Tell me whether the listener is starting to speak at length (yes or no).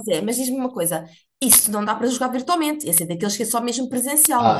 yes